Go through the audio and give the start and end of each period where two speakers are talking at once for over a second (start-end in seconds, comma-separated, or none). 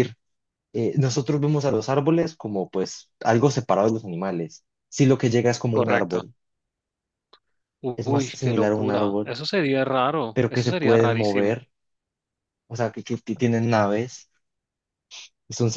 8.0-9.3, 10.3-11.6